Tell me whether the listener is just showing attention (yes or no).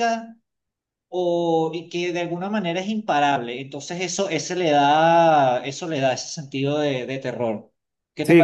no